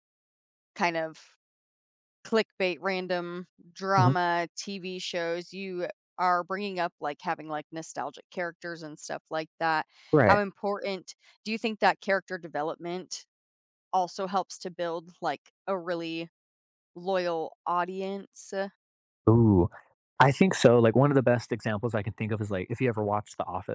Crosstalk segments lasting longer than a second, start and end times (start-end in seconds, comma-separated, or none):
none